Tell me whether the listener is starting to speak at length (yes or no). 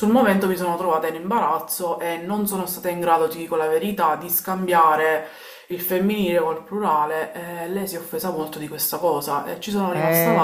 yes